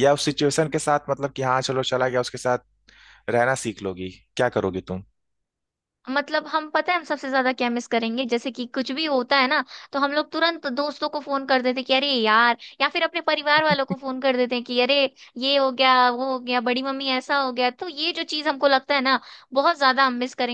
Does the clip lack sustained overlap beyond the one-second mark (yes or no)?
yes